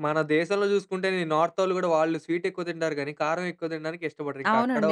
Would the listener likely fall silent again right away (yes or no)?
no